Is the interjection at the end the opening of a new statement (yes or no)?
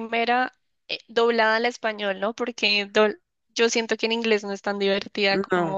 no